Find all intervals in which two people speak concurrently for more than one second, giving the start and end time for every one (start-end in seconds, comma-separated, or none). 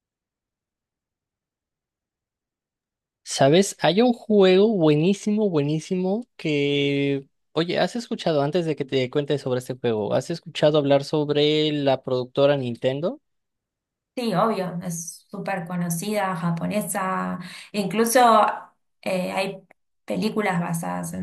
none